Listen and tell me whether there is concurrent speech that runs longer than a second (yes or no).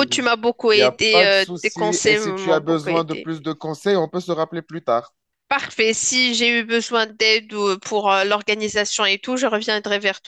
yes